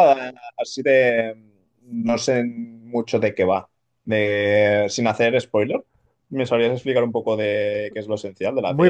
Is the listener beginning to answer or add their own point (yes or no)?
yes